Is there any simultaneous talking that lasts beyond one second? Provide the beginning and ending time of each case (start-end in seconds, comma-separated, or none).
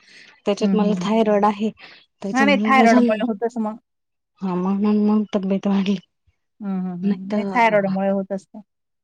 2.4-3.8